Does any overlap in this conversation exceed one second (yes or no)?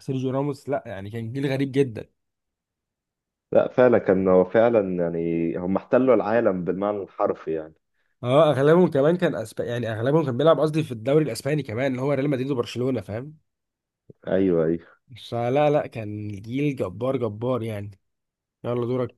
no